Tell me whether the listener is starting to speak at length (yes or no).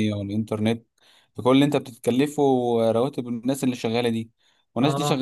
no